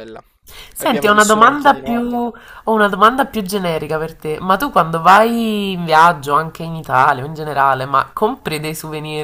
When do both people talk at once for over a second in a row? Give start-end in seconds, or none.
0.8-2.0